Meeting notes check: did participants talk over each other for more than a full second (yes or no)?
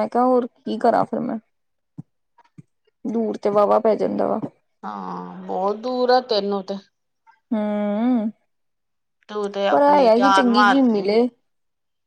yes